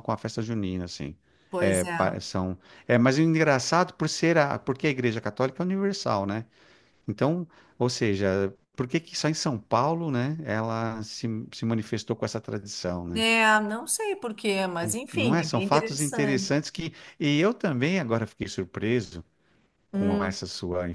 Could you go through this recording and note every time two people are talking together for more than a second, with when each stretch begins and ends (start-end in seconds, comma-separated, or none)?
14.8-16.6